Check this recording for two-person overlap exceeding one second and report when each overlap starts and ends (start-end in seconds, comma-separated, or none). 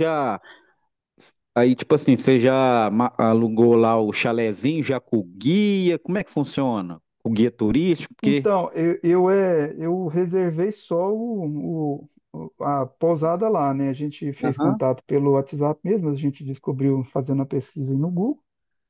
none